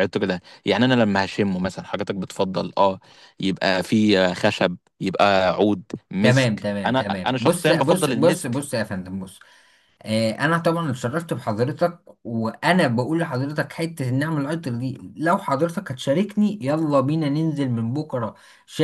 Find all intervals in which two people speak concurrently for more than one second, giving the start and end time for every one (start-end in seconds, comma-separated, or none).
6.2-8.6